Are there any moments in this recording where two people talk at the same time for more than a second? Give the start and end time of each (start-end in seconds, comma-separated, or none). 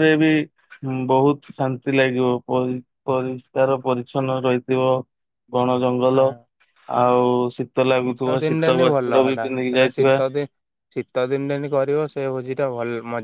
8.4-10.2